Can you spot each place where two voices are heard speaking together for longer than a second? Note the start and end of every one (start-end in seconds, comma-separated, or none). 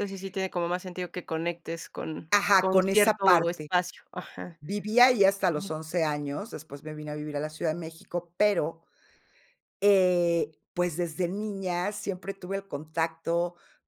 2.3-3.7